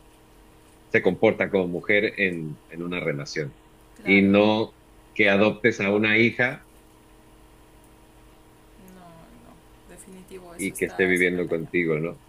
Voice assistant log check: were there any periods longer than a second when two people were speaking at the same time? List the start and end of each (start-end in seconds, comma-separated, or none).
10.6-11.8